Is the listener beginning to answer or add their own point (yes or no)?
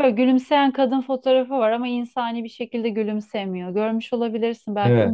yes